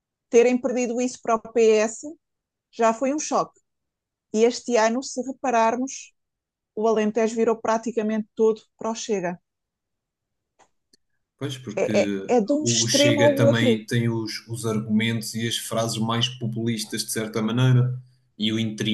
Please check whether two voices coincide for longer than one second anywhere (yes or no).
yes